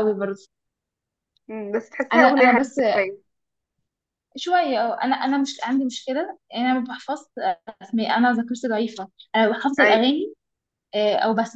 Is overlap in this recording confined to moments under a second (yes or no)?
yes